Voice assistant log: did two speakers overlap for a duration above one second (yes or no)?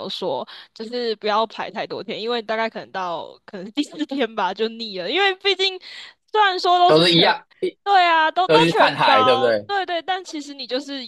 yes